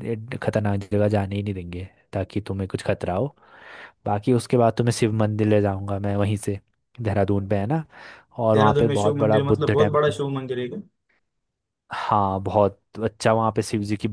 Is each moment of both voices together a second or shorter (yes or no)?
no